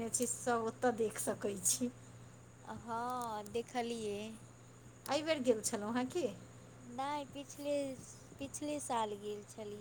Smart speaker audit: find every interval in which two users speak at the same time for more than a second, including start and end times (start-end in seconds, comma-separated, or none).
none